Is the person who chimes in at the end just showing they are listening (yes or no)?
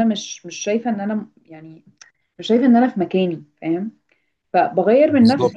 yes